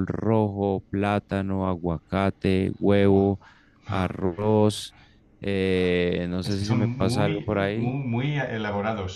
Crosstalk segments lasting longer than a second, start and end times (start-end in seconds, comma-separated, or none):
6.4-7.9